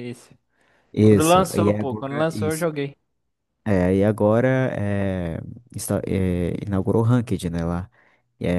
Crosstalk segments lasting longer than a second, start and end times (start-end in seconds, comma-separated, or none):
1.0-2.7